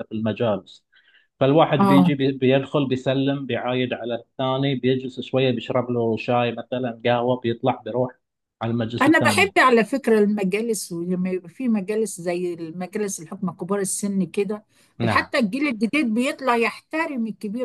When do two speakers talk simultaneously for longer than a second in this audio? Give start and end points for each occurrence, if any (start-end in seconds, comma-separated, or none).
none